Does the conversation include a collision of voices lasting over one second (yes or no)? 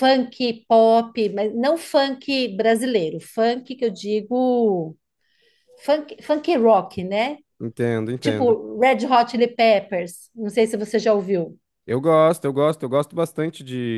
no